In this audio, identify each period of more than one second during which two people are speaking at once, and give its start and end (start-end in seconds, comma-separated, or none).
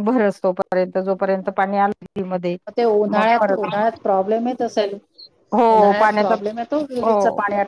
none